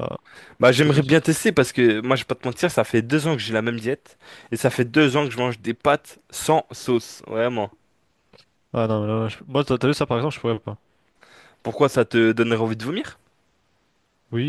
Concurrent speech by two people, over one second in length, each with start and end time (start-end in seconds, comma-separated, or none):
none